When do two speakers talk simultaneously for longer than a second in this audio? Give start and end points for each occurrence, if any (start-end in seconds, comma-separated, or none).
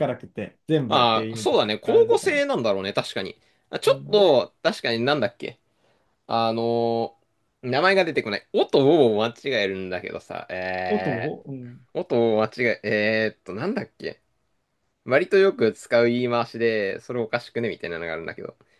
0.9-2.4